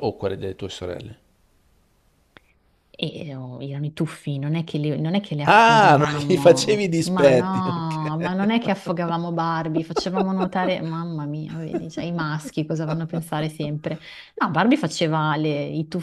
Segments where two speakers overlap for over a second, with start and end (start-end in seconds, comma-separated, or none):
5.5-8.1